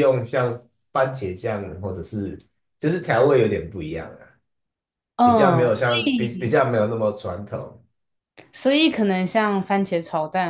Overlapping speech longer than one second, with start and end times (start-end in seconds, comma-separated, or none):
5.2-6.6